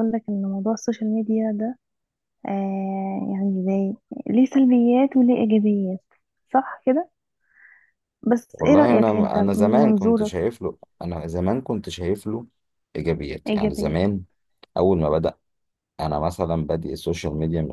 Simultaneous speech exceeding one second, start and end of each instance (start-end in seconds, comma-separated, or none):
8.5-10.3